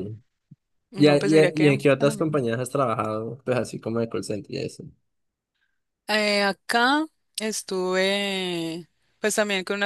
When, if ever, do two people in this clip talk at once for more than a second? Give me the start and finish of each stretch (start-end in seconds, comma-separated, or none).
1.0-2.4